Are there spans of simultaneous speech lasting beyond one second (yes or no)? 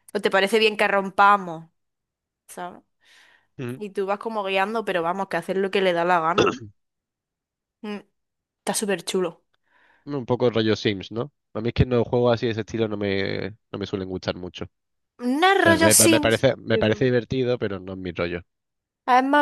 yes